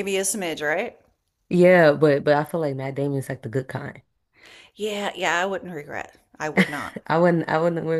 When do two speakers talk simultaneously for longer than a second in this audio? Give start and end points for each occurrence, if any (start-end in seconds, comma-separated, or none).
none